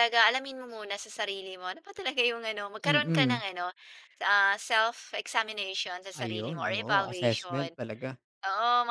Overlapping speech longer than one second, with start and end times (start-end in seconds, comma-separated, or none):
6.2-7.7